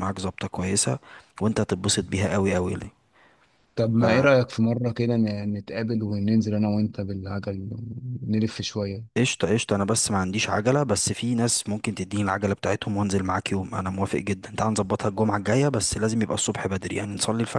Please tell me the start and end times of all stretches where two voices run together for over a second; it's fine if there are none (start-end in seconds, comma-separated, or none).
none